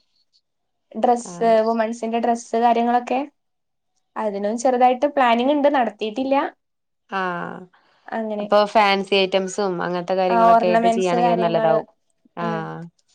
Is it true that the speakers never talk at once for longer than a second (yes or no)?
no